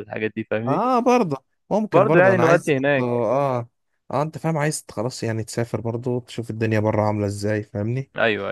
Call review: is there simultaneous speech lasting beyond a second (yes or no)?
yes